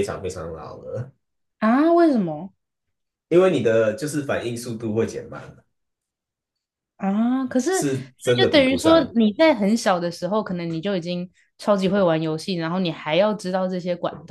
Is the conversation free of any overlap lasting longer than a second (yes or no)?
no